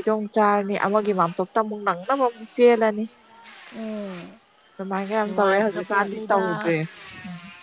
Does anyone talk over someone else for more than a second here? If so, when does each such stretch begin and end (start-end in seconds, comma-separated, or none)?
5.2-6.8